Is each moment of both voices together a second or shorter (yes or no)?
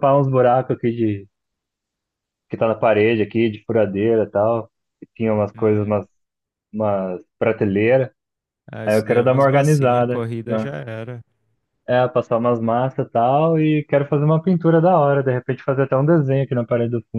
no